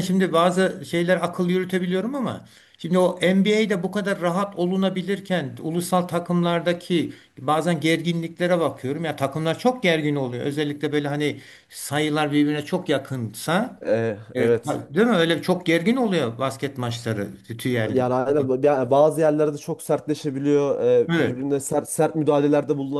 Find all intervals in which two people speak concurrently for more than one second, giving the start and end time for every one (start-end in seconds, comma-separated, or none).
none